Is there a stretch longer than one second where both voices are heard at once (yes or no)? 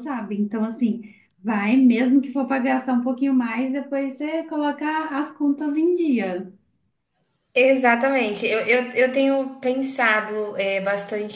no